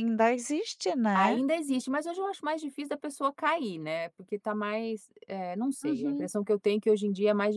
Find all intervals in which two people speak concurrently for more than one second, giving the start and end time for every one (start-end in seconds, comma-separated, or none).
none